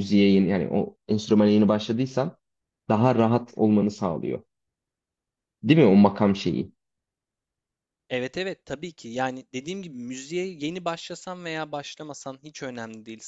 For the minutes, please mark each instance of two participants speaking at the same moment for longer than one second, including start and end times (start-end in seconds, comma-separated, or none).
none